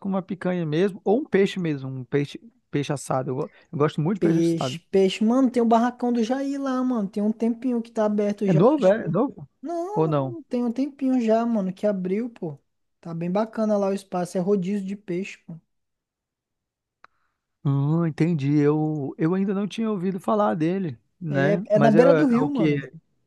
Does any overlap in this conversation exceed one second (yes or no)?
yes